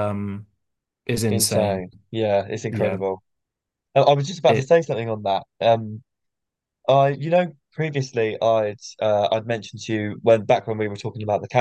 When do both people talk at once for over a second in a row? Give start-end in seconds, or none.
none